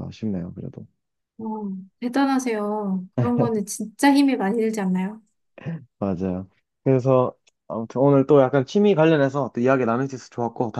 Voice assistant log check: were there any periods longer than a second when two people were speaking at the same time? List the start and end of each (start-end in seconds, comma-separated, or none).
none